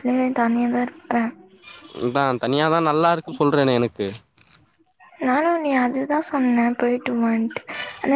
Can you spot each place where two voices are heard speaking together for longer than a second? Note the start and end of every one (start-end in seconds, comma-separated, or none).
none